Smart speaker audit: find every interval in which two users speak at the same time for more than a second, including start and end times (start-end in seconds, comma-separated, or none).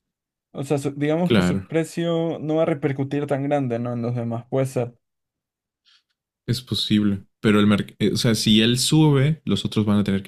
none